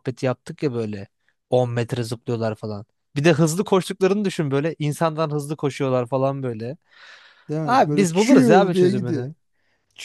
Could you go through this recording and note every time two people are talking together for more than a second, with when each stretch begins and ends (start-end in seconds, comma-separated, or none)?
7.6-9.3